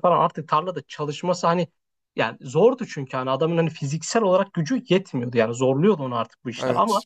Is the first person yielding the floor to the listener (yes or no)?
no